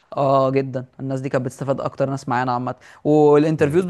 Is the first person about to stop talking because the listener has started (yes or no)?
no